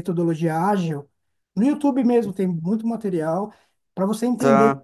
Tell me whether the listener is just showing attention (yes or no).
yes